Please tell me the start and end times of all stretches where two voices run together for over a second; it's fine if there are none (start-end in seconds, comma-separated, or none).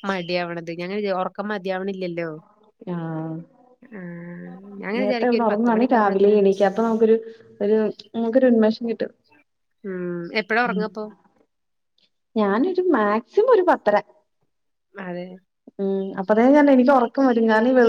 5.0-6.3